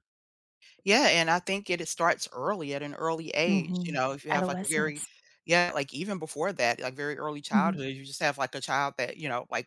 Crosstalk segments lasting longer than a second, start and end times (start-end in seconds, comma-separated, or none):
3.5-5.0